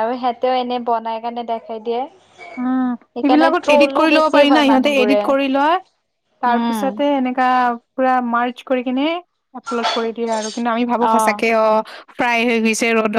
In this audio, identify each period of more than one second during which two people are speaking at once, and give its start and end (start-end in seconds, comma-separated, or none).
3.1-5.2